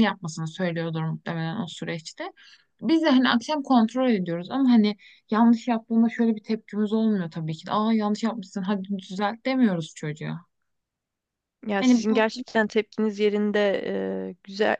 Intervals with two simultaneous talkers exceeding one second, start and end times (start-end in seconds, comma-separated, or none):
none